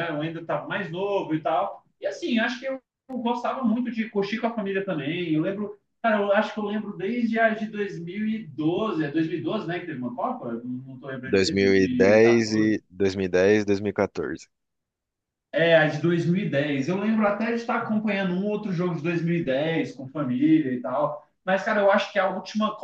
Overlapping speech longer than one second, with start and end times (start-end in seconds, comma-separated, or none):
11.3-12.7